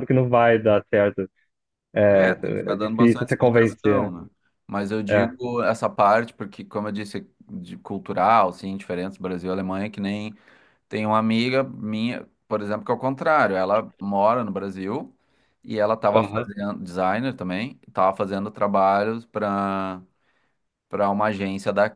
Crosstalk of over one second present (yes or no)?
yes